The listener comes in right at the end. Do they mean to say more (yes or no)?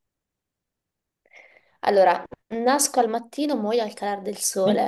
yes